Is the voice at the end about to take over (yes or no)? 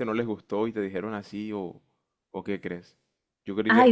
yes